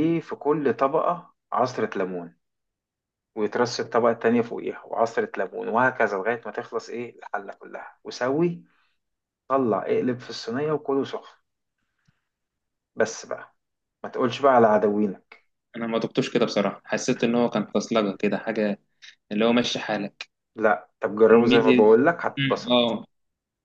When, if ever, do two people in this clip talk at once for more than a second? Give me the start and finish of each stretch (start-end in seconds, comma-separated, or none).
21.3-22.9